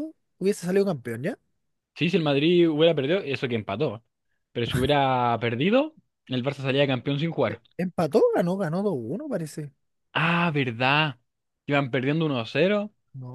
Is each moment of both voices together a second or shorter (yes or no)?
yes